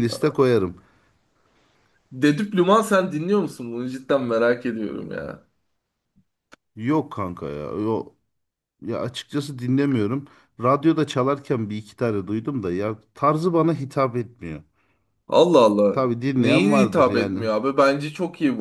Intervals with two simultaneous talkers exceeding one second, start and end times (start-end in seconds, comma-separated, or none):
15.9-17.4